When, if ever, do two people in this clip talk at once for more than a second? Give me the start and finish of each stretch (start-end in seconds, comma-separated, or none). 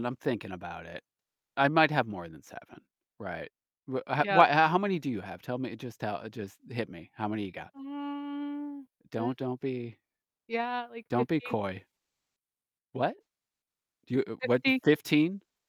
none